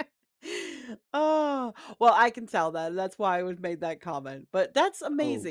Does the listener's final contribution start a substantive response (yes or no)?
no